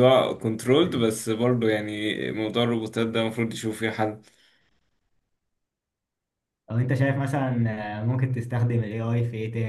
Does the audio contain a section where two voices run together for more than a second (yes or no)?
no